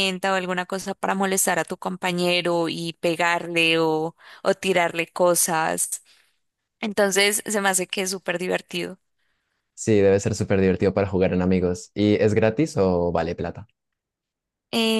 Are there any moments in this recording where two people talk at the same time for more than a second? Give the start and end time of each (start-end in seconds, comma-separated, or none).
none